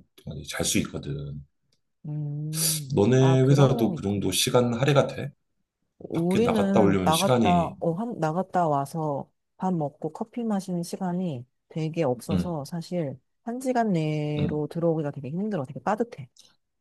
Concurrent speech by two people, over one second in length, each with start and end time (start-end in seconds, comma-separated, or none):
2.9-4.2, 6.1-7.8